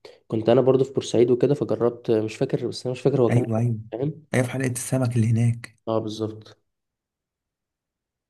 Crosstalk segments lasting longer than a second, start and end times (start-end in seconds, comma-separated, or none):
none